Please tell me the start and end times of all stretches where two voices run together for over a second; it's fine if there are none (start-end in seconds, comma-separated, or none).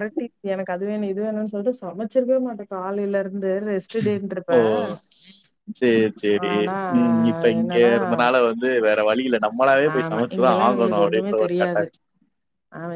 10.0-11.8